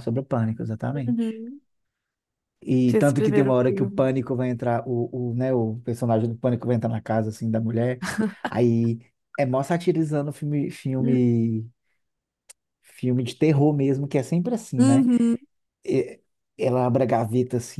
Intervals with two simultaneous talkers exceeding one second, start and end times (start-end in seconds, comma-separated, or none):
2.9-4.1